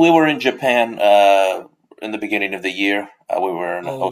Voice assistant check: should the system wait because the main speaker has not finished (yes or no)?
yes